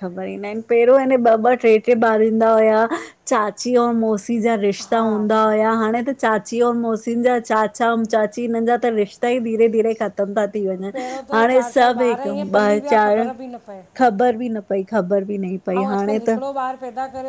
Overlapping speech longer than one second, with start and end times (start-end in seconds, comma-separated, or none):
11.4-13.2